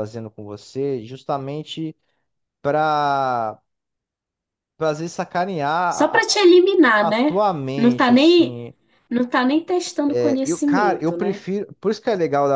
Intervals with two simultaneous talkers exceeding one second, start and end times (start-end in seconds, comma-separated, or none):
7.0-8.6, 10.1-11.4